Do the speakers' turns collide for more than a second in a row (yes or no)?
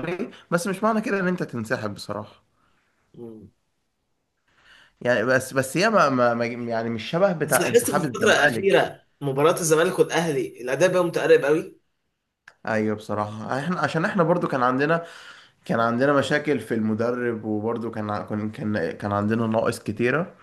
yes